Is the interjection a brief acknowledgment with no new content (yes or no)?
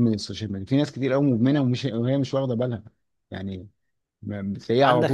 yes